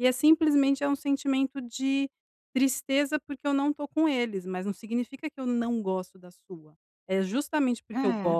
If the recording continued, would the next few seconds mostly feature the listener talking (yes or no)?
no